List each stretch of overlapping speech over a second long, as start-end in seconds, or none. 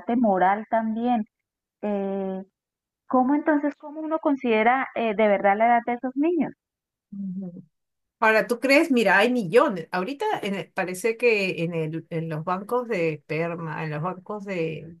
none